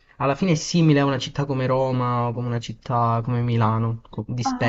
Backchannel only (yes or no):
no